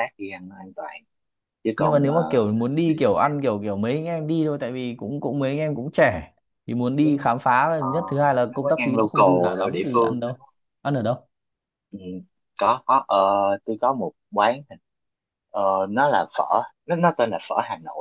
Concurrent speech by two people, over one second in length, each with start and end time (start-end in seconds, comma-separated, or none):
1.8-3.3, 8.5-10.4